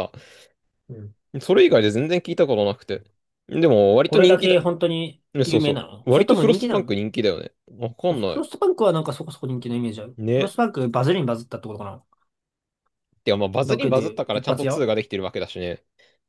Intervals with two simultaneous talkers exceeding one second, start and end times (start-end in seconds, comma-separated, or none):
5.3-7.0, 13.6-14.9